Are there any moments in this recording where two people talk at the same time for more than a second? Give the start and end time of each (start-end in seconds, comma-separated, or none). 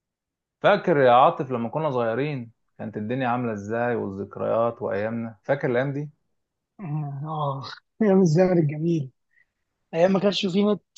none